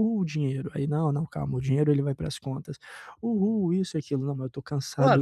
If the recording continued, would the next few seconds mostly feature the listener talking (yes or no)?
yes